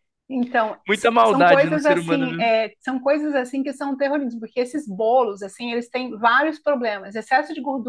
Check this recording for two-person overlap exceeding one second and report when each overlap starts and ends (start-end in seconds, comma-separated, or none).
0.9-2.5